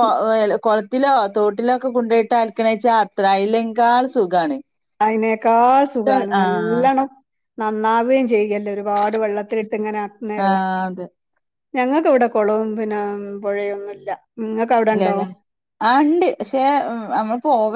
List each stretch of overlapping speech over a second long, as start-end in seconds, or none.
none